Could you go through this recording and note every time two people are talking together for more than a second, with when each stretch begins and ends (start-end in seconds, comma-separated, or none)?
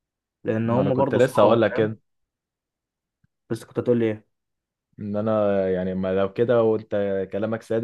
0.6-1.9